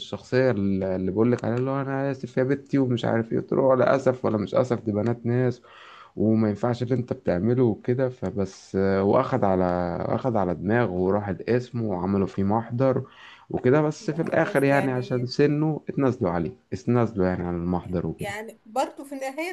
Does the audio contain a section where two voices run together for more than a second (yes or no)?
yes